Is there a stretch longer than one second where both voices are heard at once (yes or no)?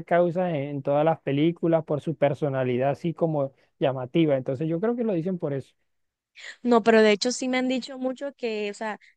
no